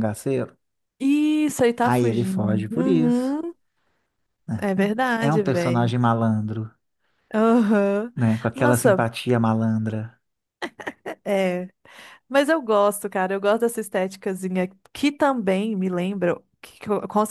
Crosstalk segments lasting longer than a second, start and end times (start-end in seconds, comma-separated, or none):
1.8-3.4, 4.6-5.9